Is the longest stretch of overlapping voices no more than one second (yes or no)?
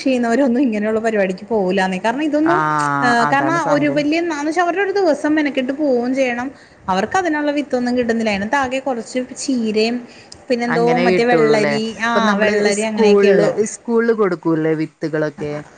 no